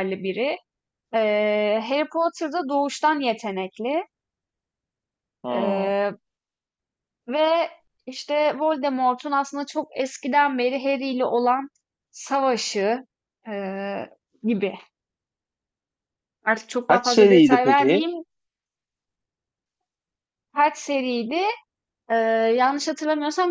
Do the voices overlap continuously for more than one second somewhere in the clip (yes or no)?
yes